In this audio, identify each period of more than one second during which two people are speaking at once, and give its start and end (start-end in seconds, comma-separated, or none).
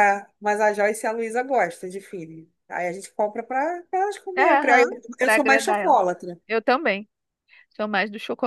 4.3-6.0